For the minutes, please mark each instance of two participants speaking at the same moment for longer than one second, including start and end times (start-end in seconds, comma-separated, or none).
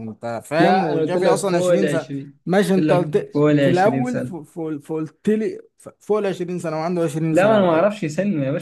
0.6-2.1, 2.8-4.4